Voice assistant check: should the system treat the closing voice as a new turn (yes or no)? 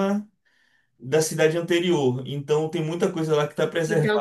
yes